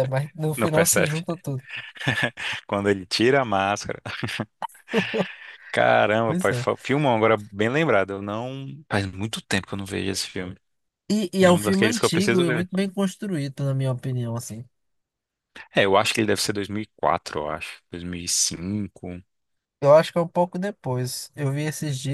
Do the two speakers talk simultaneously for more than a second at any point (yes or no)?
yes